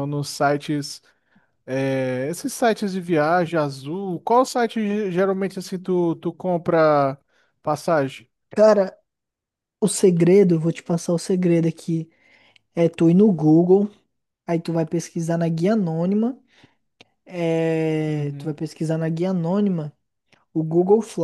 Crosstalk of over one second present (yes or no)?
no